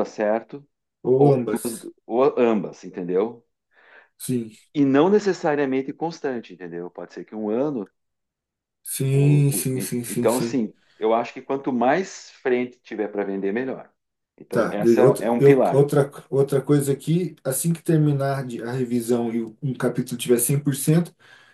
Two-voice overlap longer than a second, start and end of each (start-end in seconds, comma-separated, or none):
9.1-10.7, 14.5-15.9